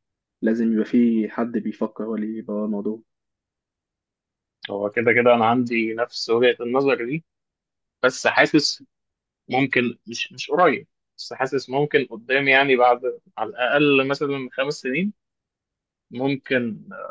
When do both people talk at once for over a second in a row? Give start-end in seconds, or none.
none